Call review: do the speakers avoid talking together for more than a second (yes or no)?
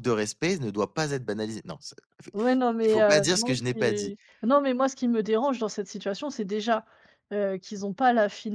no